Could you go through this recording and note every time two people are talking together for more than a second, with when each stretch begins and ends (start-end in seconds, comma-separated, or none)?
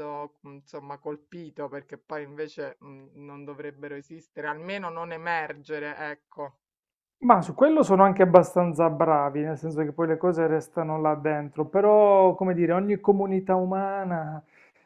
none